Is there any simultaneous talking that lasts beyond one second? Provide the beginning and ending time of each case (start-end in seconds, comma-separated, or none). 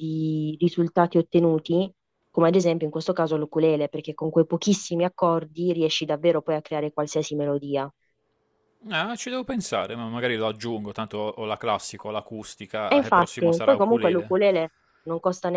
12.9-14.4